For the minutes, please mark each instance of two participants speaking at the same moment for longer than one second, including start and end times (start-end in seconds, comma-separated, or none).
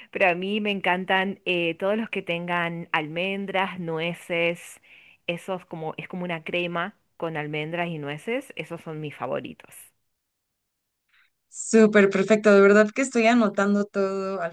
none